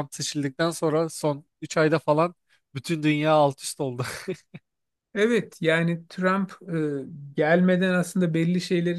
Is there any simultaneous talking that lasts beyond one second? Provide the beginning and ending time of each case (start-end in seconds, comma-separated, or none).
none